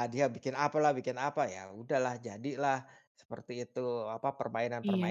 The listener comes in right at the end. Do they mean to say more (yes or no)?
no